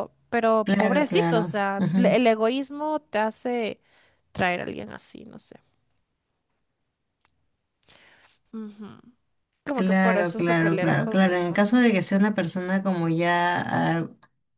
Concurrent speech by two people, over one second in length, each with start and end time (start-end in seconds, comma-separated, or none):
0.6-2.2, 9.7-11.7